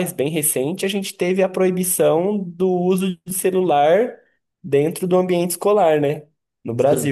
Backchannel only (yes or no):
yes